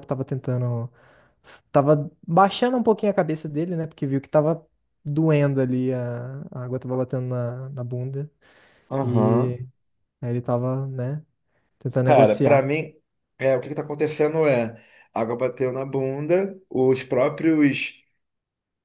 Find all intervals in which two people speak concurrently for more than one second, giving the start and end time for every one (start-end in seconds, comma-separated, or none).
none